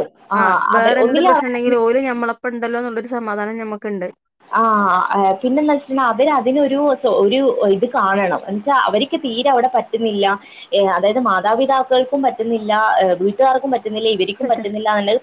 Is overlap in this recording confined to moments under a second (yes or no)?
yes